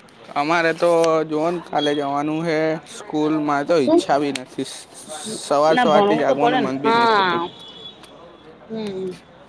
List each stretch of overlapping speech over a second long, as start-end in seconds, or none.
5.8-7.4